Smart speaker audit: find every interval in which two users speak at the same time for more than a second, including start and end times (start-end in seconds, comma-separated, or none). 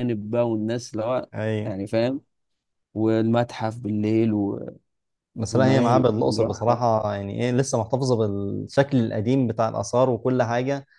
5.5-6.8